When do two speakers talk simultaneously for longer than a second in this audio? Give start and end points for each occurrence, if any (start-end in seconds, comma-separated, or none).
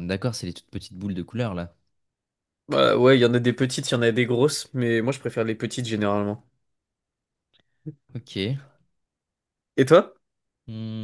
none